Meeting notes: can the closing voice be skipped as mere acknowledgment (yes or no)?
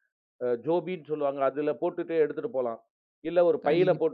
yes